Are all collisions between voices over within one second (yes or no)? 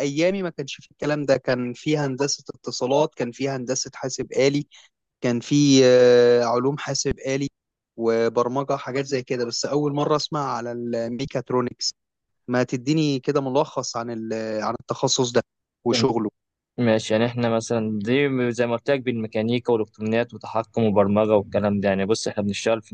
yes